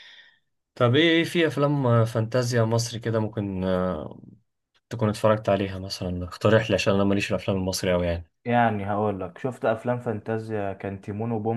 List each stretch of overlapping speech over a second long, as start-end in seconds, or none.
none